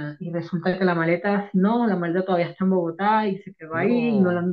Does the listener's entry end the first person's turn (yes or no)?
no